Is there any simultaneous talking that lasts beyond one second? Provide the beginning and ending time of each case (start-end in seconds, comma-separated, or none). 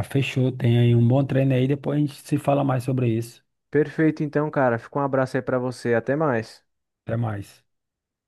none